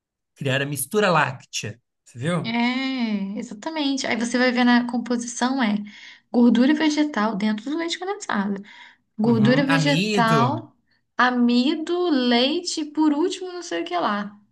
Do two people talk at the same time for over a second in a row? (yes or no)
yes